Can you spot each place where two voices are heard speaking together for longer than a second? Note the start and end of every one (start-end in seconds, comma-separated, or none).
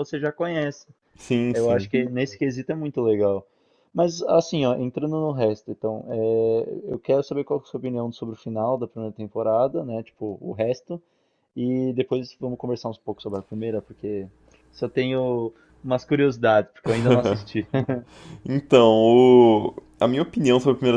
none